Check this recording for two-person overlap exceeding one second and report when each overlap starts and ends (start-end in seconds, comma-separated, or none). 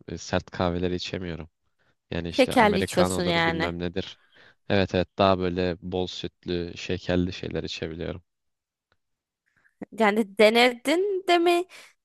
2.3-3.7